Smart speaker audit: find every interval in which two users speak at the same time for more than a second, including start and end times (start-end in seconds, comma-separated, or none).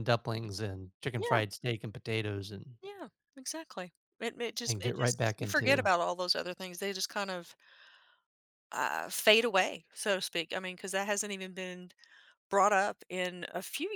4.7-5.9